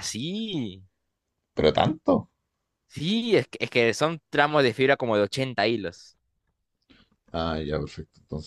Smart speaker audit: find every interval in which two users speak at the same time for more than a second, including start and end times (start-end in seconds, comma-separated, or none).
none